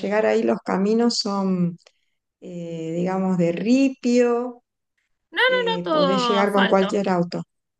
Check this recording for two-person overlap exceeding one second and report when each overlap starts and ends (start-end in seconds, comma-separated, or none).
5.5-7.0